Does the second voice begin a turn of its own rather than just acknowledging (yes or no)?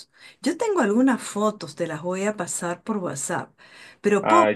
no